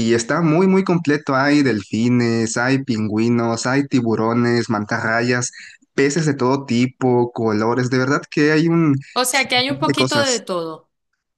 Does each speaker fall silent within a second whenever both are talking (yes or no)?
no